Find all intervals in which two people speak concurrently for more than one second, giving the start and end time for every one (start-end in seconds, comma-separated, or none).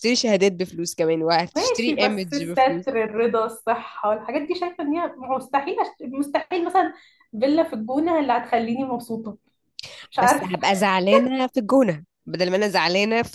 1.6-2.9